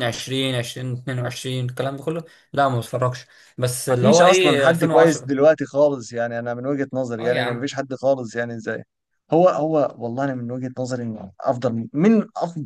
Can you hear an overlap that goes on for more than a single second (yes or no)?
yes